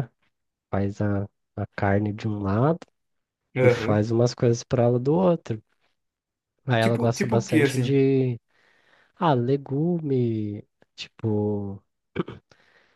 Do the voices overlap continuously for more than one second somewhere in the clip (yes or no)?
yes